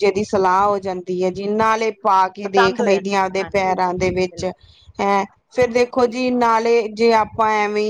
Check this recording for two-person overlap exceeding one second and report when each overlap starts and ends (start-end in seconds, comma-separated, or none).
2.4-4.4